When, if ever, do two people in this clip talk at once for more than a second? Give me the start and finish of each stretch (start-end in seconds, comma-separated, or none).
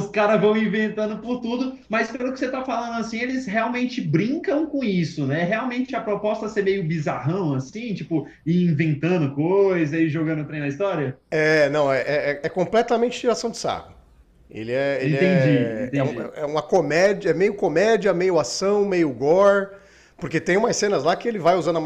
15.0-16.3